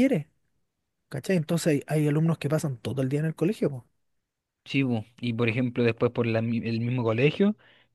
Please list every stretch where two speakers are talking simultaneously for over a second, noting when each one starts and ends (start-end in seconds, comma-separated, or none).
none